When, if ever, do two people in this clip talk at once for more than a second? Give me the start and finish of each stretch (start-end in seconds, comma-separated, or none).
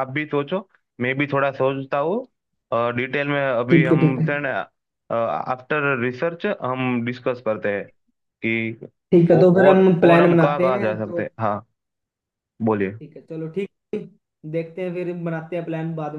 9.3-11.2